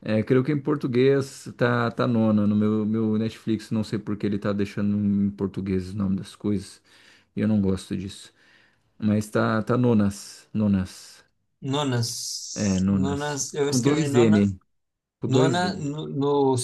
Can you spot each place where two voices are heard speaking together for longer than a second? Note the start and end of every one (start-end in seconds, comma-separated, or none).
12.5-14.4